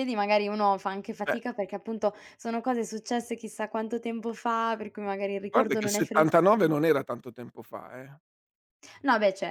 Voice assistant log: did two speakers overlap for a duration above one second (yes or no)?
yes